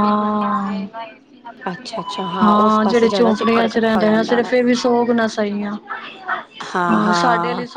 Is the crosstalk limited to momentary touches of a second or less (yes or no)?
no